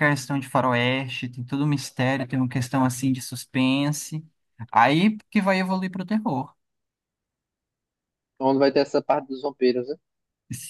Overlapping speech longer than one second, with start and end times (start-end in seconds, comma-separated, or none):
none